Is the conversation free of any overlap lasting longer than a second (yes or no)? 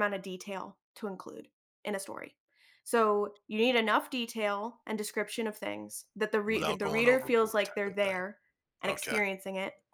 no